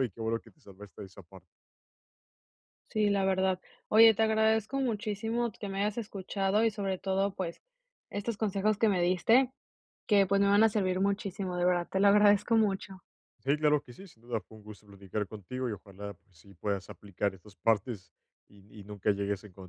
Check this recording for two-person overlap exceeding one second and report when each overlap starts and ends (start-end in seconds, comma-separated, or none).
none